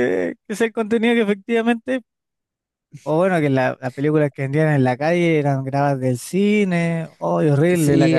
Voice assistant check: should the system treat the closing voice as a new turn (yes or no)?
yes